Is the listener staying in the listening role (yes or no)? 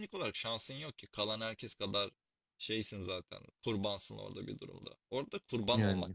yes